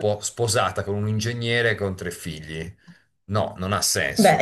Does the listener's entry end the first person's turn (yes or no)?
yes